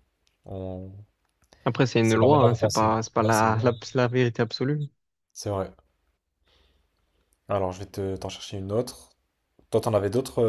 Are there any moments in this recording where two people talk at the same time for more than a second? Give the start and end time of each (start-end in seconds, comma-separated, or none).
2.0-3.6